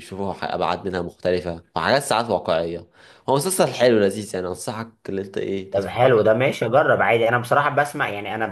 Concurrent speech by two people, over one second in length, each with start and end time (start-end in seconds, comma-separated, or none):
none